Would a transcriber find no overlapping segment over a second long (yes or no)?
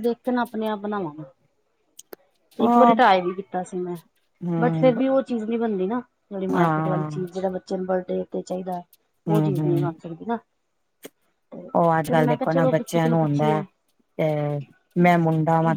no